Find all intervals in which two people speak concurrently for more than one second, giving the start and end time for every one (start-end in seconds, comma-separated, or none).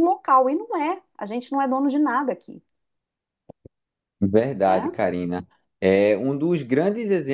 none